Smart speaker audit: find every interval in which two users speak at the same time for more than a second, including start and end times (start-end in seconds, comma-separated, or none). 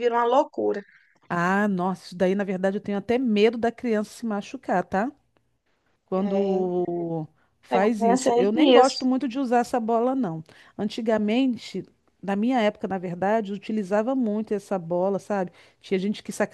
7.7-9.1